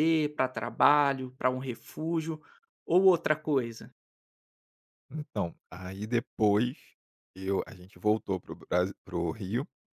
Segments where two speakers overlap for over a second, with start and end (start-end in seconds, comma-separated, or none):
none